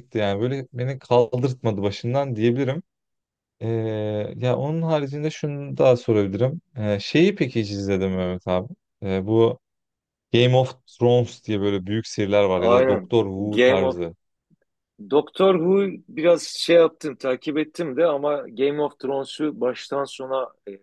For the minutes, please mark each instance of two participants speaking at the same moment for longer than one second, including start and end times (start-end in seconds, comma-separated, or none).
12.6-14.0